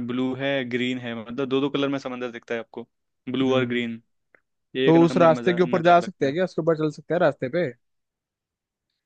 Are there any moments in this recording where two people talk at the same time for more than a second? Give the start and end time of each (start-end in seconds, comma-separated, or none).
4.8-6.3